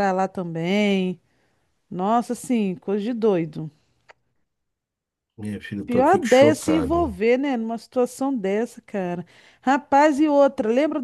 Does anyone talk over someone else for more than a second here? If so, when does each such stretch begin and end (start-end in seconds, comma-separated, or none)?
5.8-7.2